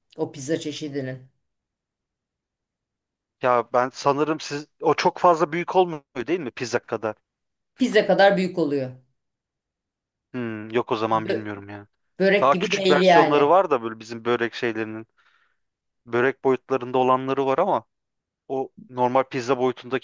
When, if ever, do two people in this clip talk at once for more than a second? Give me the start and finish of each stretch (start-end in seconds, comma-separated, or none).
12.4-13.6